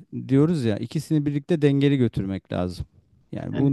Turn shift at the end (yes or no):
no